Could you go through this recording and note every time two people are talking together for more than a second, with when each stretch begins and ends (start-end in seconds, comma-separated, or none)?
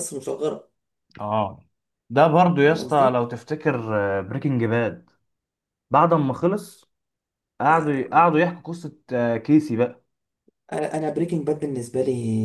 none